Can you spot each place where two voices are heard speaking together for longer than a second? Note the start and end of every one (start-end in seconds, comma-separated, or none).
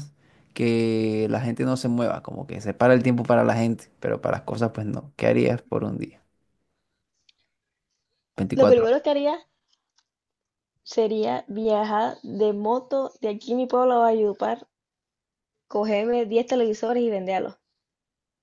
none